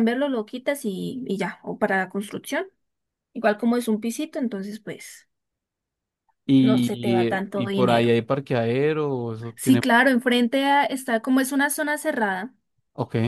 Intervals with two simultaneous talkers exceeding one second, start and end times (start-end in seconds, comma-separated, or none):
6.6-8.2